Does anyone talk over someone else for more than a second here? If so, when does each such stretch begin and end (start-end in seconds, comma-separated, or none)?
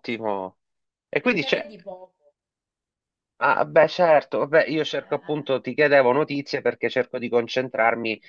none